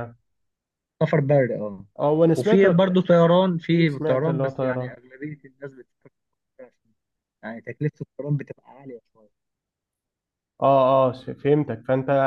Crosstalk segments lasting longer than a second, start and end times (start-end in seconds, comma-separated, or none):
3.7-4.9